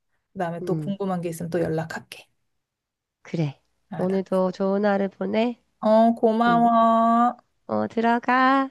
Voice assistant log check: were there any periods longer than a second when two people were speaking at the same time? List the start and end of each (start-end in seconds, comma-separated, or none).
none